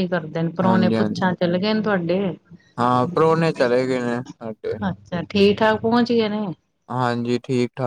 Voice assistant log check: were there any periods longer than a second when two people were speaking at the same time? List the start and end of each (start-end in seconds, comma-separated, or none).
none